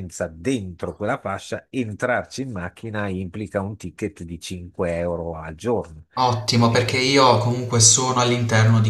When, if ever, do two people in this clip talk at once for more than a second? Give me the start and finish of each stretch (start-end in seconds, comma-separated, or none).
none